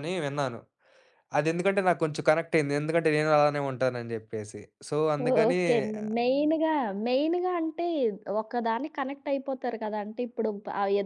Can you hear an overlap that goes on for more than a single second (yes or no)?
no